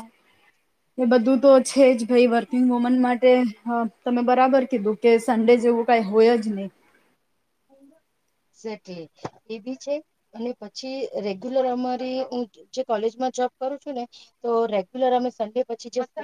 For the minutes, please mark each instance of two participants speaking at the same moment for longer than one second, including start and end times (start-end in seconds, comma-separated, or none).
none